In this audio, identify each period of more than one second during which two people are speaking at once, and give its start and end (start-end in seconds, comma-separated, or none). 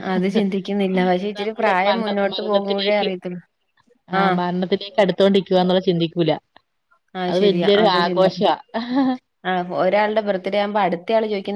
1.4-3.1